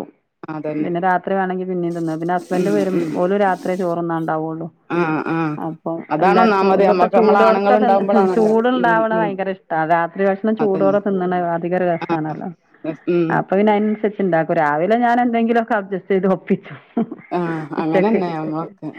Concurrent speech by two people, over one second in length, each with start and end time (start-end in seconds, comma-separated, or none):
6.2-9.3